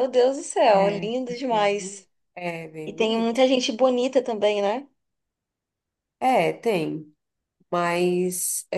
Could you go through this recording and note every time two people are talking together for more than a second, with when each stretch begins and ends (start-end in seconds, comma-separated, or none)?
0.7-2.1